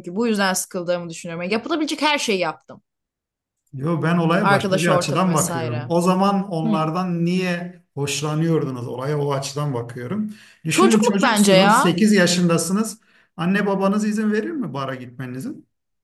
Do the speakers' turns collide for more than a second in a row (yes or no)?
yes